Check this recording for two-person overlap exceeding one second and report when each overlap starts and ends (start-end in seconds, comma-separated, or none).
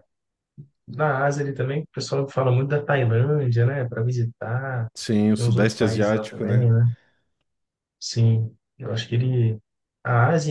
5.3-6.7